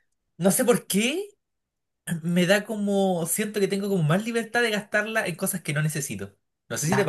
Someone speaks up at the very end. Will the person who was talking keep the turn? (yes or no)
no